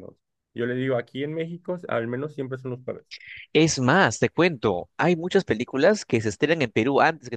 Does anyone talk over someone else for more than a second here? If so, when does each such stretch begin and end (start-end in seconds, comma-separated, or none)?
none